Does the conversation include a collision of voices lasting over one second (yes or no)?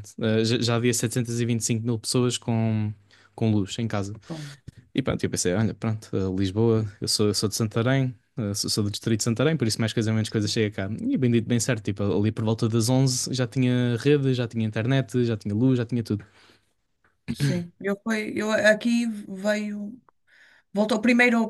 no